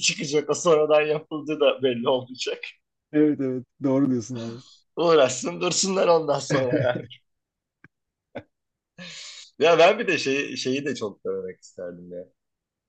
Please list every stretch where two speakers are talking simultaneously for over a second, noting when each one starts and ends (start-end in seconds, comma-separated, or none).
none